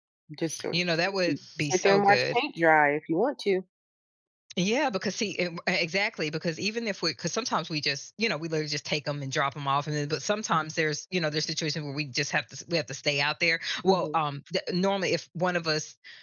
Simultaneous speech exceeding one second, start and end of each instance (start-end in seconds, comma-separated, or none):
0.7-2.4